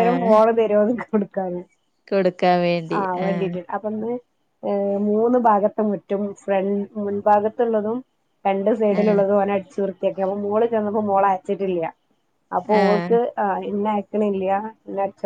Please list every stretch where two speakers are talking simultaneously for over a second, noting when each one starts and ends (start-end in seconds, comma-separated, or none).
none